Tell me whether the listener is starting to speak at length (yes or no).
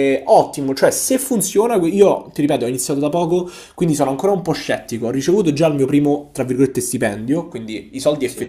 no